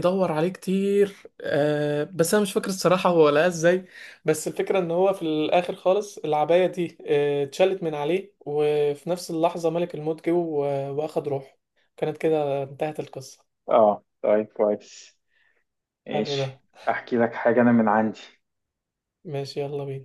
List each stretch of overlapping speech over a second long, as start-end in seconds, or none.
none